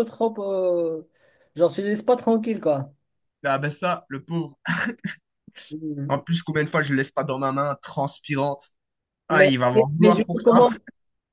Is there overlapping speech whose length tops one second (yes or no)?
yes